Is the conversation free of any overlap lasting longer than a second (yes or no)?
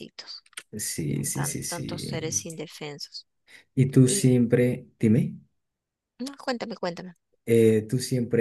no